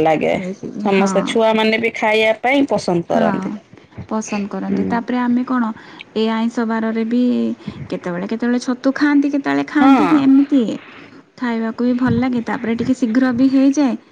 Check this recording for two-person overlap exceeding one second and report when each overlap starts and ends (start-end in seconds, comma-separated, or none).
none